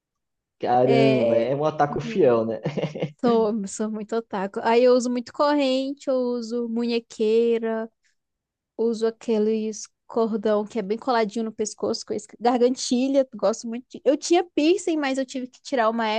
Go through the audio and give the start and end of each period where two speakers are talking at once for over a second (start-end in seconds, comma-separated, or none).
0.8-2.2